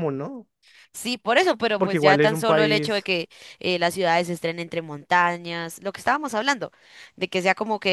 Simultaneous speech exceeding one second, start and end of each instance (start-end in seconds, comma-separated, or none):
1.8-3.1